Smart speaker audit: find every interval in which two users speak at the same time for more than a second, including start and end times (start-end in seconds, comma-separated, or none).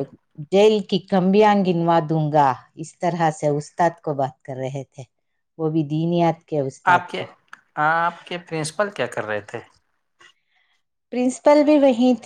none